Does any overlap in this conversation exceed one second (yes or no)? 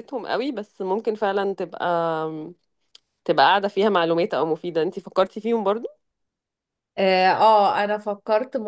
no